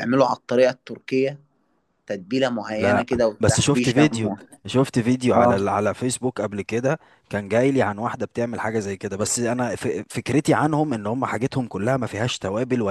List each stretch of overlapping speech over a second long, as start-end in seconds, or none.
2.6-4.4